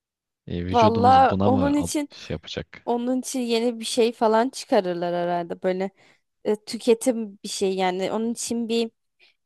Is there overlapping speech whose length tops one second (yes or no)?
yes